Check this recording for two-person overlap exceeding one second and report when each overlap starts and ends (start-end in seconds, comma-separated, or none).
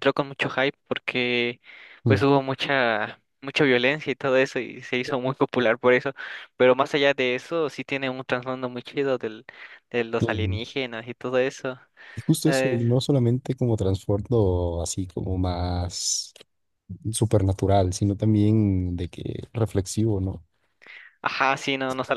none